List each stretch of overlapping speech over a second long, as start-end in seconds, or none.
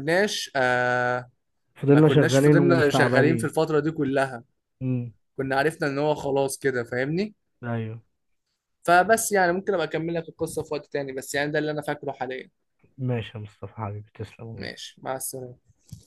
1.9-3.5